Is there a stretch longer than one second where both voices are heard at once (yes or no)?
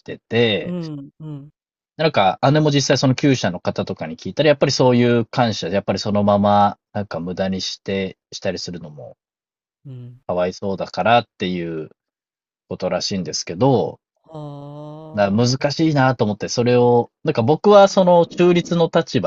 no